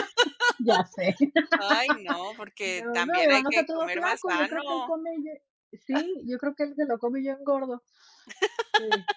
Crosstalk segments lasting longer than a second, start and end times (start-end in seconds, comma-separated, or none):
2.6-4.9